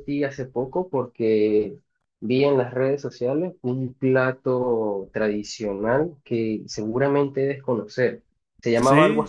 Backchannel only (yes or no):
yes